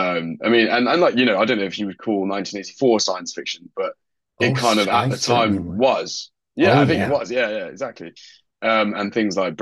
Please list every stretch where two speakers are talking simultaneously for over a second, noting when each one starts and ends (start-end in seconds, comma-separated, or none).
4.4-5.9